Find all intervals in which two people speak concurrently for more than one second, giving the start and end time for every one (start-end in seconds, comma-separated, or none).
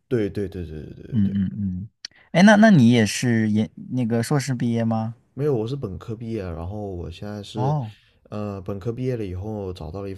none